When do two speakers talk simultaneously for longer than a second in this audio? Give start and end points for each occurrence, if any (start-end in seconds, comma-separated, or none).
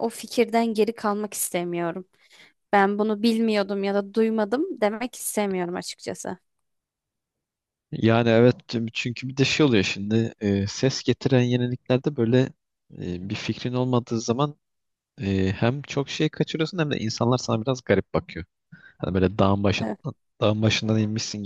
none